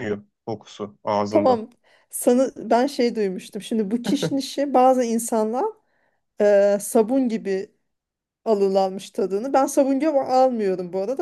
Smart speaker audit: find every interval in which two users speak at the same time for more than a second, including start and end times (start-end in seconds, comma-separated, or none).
none